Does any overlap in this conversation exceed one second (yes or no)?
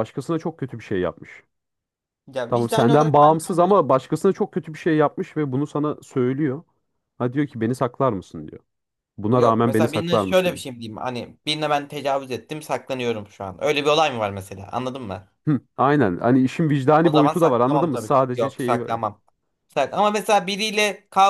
yes